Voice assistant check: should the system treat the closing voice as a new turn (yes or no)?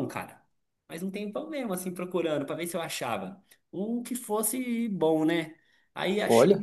no